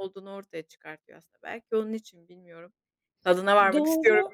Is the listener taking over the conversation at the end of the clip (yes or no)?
yes